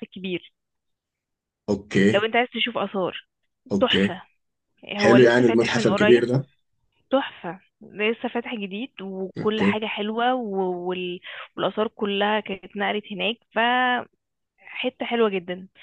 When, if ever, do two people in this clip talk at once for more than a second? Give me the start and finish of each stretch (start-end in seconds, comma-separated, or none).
5.0-6.2